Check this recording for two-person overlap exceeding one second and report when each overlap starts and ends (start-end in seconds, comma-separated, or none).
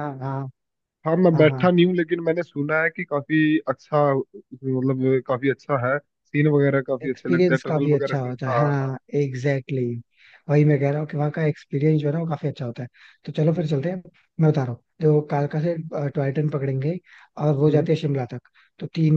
7.0-8.9